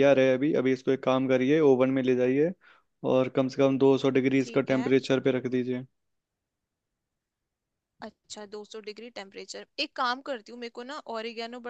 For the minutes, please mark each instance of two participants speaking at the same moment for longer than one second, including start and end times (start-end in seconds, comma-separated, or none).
none